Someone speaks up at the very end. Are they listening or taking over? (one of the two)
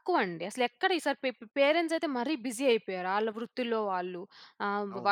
listening